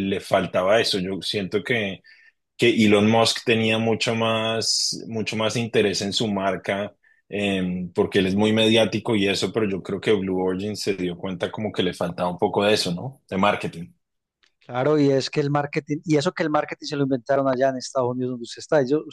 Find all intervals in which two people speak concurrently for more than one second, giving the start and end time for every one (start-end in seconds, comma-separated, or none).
none